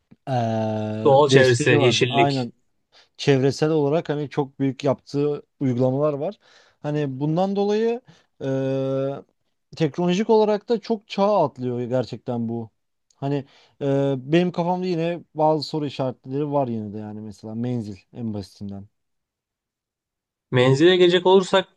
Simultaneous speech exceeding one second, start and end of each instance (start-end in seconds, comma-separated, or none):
1.0-2.5